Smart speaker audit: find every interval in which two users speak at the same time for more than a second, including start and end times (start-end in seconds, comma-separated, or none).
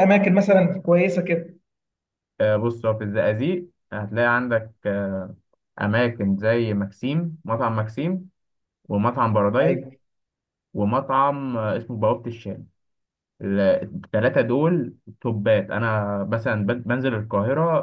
none